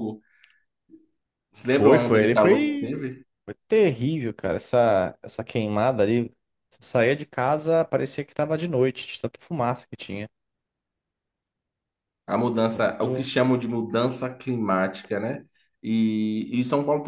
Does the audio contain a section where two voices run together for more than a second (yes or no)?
yes